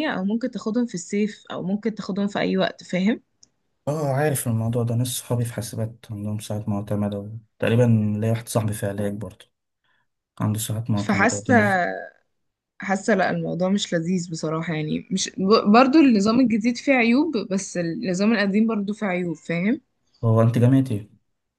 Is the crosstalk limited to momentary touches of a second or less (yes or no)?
yes